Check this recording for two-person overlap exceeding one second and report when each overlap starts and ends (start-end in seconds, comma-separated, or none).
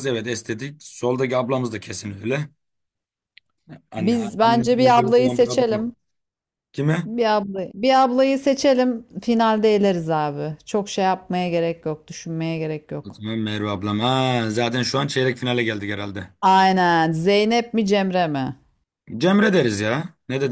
4.0-5.8